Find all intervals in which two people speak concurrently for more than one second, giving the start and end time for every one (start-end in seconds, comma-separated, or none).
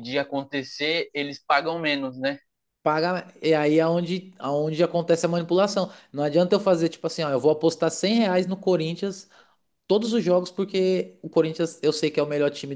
none